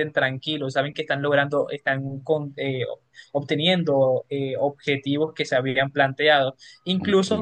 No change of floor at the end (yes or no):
yes